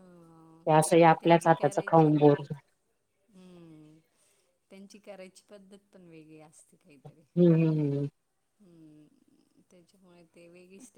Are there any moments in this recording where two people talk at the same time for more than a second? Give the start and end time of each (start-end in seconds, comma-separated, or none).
0.7-2.4